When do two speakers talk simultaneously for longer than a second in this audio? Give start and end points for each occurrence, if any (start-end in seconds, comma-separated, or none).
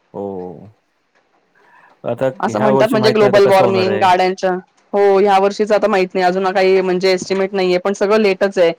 2.4-4.0